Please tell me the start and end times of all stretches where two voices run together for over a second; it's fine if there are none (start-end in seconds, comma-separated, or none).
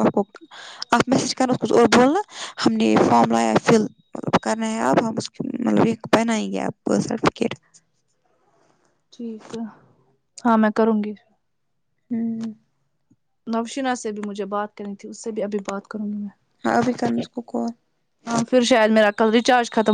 none